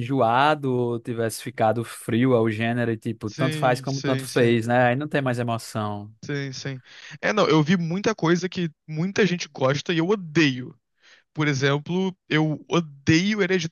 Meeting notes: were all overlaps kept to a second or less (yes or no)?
no